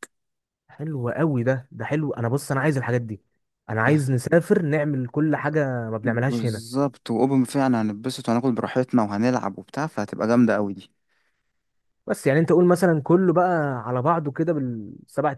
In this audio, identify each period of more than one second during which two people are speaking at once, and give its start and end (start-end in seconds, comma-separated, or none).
none